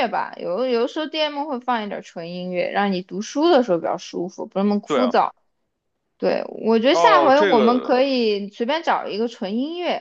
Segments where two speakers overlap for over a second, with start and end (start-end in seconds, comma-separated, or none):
6.9-8.1